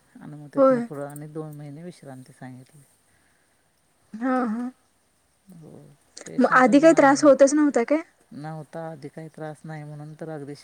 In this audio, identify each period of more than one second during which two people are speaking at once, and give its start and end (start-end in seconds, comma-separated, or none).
6.4-8.0